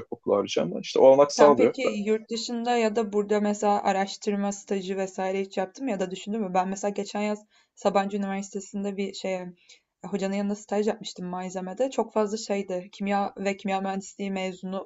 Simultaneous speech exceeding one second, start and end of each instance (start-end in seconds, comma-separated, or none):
none